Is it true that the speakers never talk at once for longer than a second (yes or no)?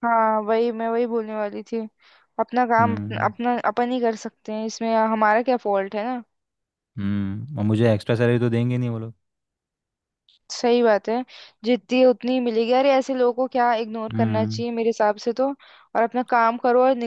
yes